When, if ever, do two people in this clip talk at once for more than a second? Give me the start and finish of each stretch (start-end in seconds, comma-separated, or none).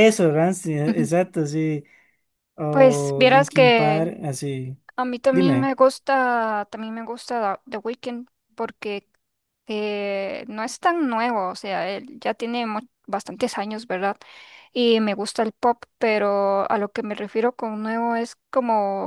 2.7-4.1